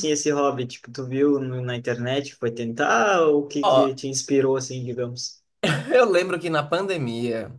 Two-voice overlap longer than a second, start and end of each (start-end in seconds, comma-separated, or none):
none